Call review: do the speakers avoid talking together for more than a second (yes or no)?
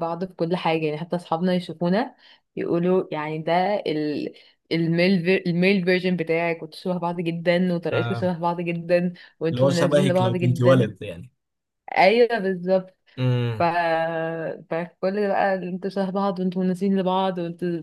no